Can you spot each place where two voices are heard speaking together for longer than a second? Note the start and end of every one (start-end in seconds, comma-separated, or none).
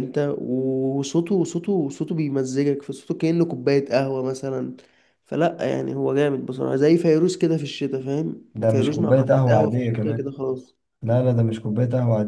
8.5-10.3